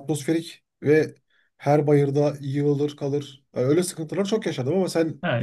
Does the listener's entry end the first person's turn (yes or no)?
yes